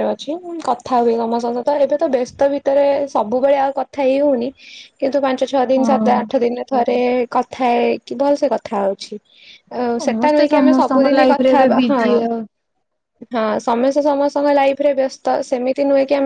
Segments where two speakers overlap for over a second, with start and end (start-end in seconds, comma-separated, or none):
10.0-12.0